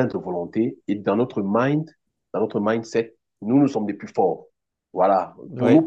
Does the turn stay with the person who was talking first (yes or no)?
yes